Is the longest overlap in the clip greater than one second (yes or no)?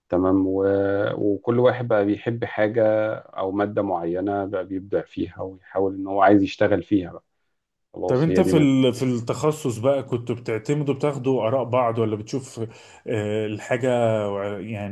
no